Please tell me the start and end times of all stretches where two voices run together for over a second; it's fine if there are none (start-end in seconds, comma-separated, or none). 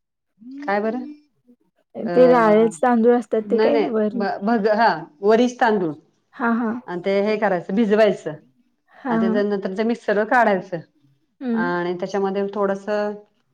none